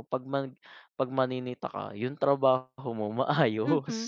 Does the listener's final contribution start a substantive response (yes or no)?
yes